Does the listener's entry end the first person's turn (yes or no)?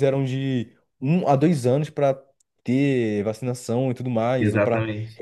no